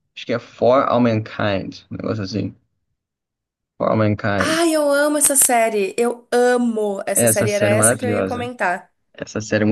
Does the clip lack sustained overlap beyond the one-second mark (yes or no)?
no